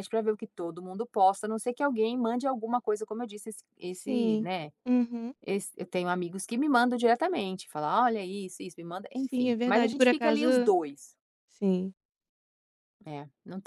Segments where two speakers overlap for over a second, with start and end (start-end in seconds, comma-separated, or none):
9.1-10.5